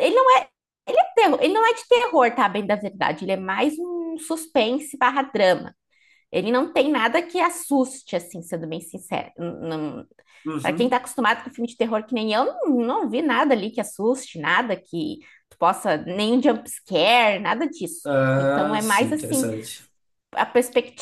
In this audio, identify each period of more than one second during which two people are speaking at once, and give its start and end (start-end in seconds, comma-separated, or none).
18.0-19.5